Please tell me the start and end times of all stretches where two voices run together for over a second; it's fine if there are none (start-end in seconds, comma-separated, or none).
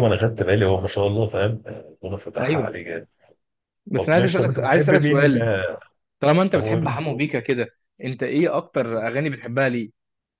4.0-5.5